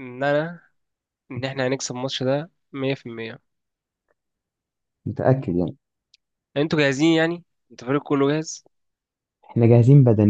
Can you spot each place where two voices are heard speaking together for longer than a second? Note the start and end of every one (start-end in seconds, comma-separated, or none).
none